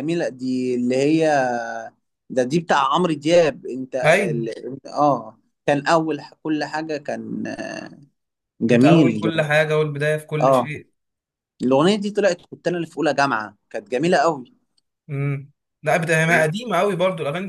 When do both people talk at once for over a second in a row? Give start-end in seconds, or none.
none